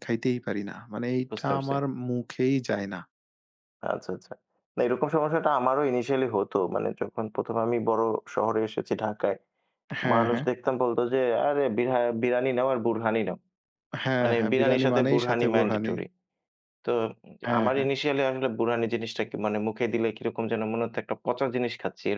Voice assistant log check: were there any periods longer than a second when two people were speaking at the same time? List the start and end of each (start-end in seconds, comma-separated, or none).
14.2-15.9